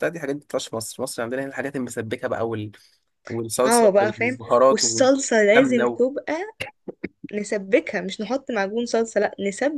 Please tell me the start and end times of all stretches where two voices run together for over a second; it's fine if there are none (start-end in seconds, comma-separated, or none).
3.6-6.0